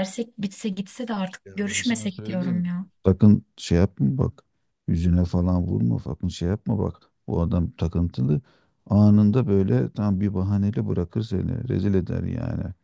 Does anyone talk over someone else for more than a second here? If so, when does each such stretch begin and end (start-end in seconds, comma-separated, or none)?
1.4-2.7